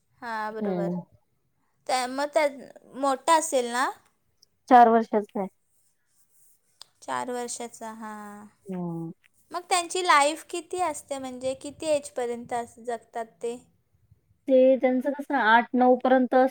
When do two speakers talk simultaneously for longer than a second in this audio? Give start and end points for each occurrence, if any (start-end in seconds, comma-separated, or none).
none